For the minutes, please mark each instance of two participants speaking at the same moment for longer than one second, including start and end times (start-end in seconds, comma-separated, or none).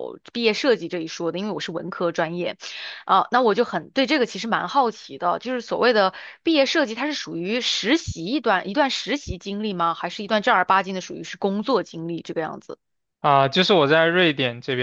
none